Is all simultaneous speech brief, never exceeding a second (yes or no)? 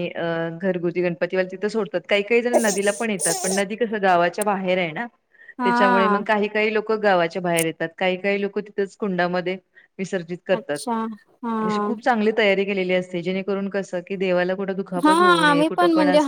yes